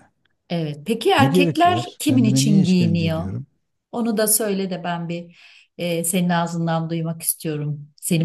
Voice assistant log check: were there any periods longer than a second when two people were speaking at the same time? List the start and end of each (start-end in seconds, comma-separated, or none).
1.2-3.2